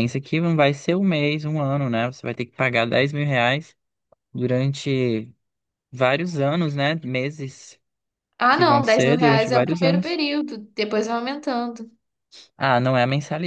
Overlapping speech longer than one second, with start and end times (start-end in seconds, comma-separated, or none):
8.5-10.2